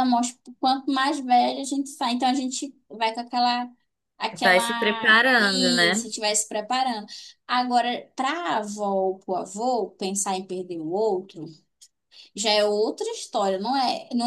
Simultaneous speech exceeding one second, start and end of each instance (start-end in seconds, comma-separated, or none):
4.4-6.1